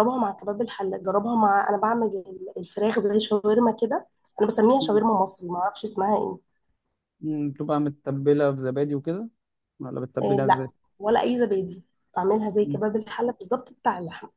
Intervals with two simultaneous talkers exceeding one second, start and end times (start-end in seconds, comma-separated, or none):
none